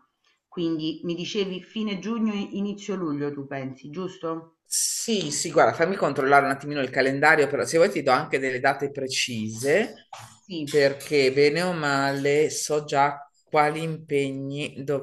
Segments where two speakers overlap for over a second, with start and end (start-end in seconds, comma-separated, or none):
none